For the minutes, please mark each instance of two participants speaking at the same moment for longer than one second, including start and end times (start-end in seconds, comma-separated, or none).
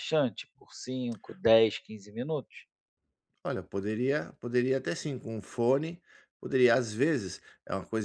none